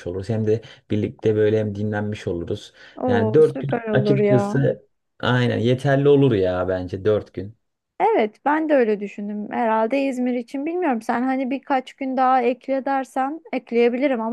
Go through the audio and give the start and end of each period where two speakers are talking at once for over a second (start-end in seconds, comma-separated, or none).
3.0-4.6